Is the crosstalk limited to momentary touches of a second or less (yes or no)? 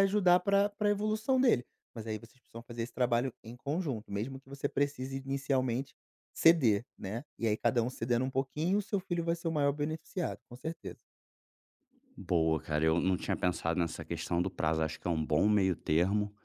yes